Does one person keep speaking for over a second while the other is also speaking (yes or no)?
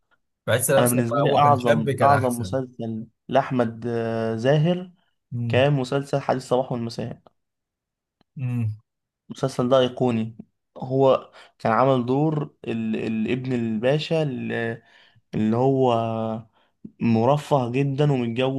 yes